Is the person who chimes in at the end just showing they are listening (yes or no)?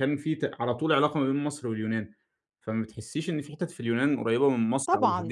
no